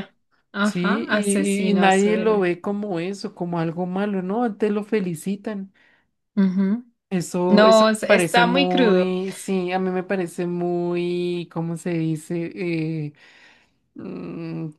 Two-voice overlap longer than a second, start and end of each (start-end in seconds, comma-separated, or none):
0.6-2.5, 7.5-9.1